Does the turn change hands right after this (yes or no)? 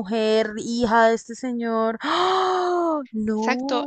yes